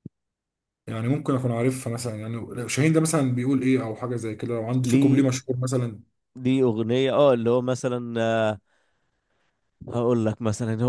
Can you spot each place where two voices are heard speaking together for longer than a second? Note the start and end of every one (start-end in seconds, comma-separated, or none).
none